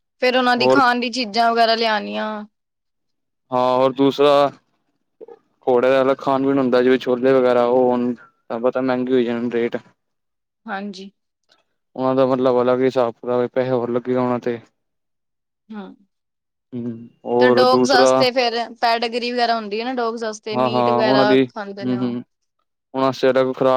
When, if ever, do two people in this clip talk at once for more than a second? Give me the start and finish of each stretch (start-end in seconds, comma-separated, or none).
20.5-22.2